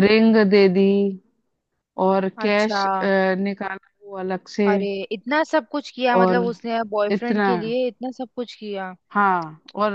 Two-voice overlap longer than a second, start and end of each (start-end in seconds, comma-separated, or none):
none